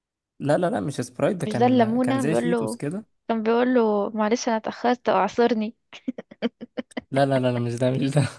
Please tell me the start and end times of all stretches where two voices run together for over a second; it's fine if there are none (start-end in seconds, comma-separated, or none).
1.4-2.8